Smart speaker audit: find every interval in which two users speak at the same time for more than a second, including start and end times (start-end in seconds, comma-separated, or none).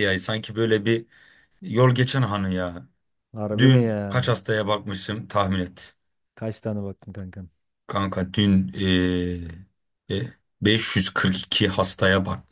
none